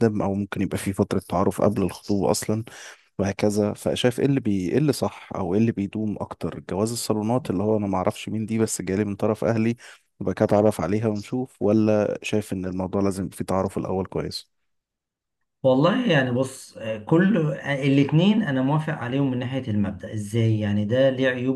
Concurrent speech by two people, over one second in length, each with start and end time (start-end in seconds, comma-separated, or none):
none